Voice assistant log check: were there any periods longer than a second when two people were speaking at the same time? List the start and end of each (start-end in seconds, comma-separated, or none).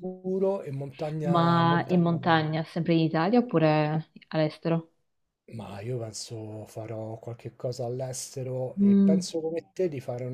1.2-2.4